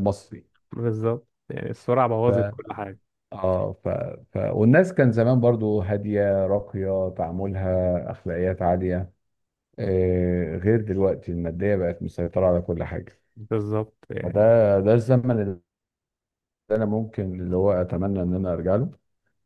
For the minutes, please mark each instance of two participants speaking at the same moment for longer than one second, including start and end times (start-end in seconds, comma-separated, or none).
none